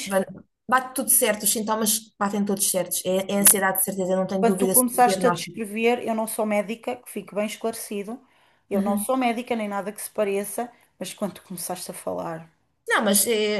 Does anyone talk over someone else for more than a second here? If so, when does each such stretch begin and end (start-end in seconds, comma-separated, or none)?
4.4-5.6